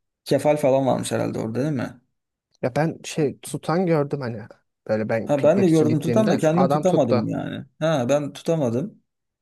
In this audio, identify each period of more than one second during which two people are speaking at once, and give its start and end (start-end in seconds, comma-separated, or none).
5.2-7.3